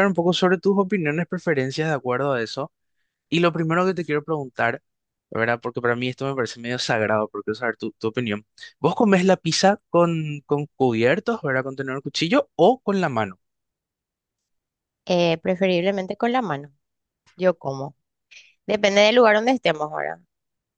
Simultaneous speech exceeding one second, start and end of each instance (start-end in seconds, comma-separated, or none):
none